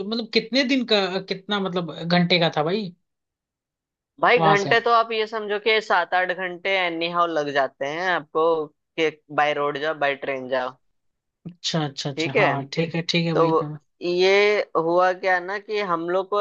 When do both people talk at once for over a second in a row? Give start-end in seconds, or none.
none